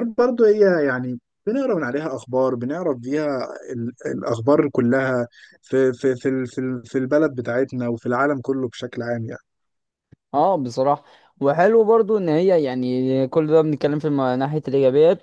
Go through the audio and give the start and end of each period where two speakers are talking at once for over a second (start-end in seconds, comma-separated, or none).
none